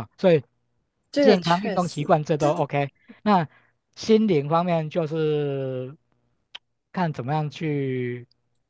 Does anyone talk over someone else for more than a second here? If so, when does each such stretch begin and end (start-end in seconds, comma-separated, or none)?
1.2-2.6